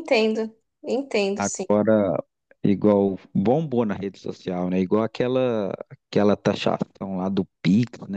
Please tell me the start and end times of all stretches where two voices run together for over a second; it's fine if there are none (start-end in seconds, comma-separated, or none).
none